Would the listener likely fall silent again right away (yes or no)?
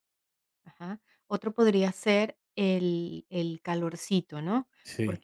yes